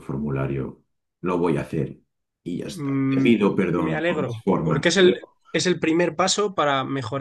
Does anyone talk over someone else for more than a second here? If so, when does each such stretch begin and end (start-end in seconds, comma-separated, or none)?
2.6-5.3